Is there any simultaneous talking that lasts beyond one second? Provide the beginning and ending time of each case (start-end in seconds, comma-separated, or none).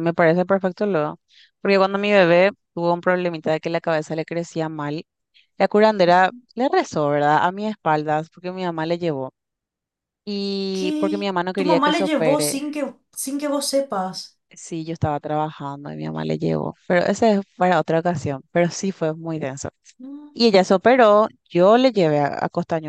10.7-12.6